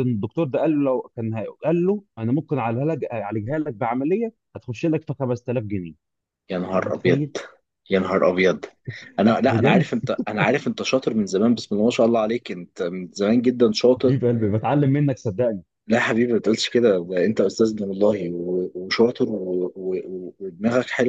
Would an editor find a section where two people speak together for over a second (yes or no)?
no